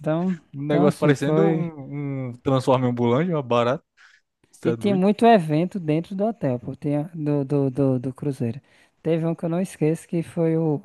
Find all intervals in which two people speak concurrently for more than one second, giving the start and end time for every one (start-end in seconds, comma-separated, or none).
0.5-1.7